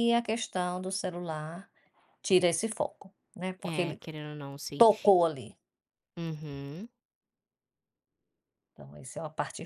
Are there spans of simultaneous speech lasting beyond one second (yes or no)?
no